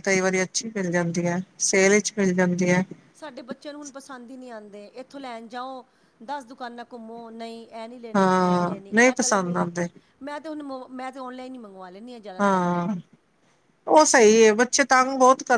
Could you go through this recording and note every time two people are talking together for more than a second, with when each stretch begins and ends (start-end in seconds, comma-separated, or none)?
8.2-9.6